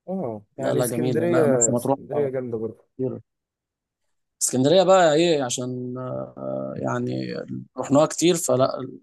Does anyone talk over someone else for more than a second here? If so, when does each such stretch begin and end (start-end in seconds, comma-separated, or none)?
0.6-2.3